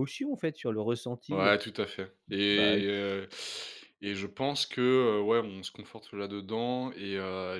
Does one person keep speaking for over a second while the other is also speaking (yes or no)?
no